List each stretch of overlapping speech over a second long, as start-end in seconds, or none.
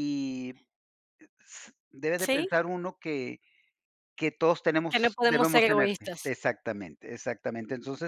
4.9-6.3